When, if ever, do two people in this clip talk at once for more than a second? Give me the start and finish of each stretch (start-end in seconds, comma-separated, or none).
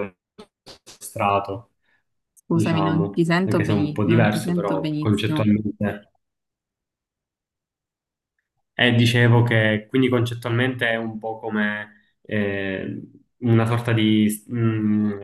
2.5-5.5